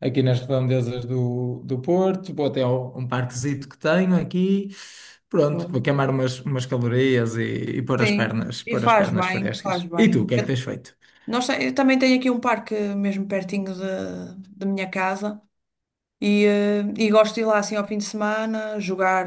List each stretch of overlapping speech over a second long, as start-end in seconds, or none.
8.0-10.5